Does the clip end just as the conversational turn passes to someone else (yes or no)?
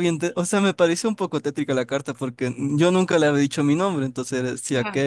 no